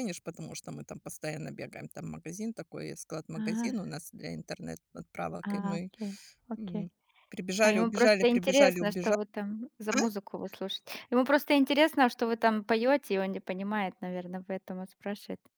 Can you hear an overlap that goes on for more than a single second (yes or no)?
yes